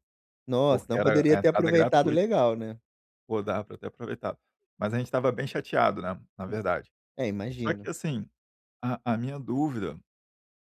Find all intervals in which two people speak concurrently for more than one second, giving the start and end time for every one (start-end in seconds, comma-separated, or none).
0.7-2.2